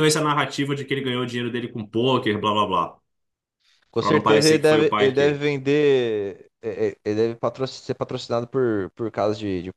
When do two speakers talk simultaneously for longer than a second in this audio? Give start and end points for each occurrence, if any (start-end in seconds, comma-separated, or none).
4.0-5.4